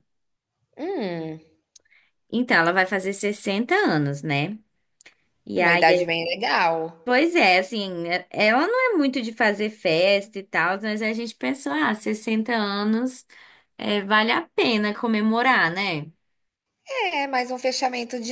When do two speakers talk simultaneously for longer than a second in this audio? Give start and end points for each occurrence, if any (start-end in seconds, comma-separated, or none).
none